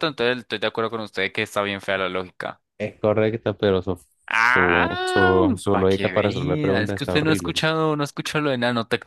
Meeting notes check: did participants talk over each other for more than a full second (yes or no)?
yes